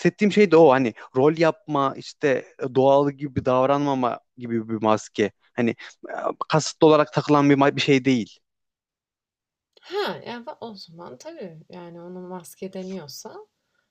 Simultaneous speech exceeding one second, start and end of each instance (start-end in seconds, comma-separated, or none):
none